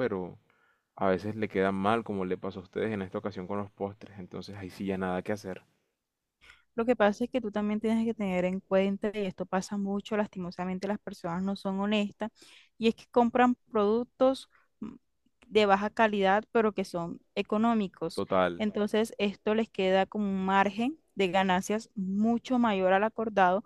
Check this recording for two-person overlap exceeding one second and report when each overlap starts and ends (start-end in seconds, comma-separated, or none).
none